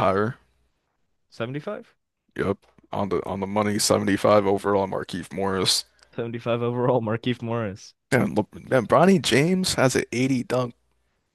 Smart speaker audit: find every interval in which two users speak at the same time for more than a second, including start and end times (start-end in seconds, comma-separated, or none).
none